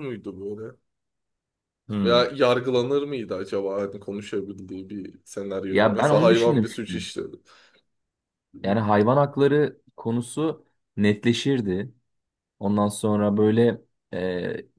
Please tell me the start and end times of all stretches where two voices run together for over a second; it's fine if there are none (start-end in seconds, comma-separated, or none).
5.7-6.9